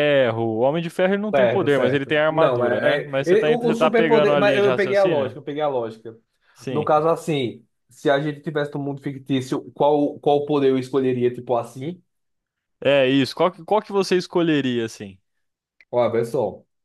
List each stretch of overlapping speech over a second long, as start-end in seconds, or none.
1.3-5.4